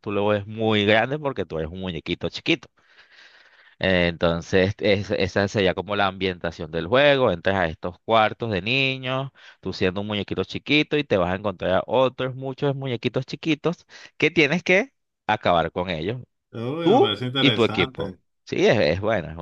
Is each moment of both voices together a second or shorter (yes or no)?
no